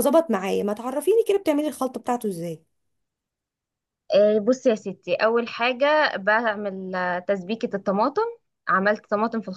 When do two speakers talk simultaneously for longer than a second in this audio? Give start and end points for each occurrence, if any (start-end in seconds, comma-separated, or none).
none